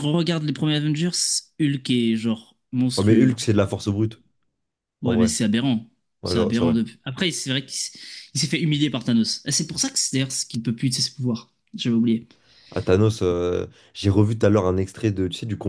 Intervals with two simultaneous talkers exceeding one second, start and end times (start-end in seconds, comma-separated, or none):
none